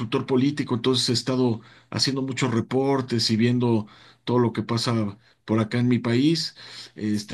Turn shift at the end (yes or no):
no